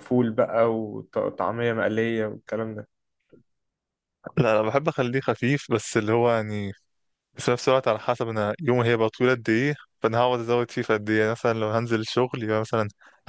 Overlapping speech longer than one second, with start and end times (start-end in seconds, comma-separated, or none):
none